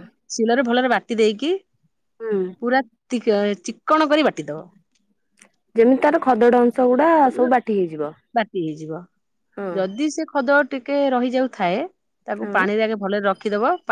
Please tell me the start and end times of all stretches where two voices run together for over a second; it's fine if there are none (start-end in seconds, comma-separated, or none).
none